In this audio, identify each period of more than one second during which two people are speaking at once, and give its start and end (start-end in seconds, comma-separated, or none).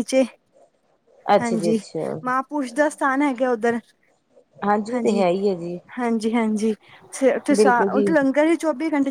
none